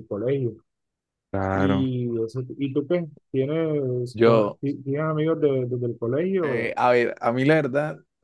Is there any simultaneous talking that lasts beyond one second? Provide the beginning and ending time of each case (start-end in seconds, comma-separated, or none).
none